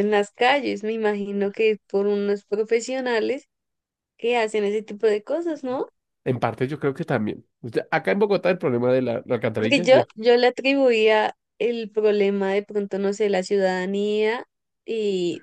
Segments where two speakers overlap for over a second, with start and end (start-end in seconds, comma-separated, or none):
none